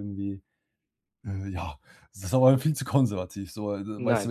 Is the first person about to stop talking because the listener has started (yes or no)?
no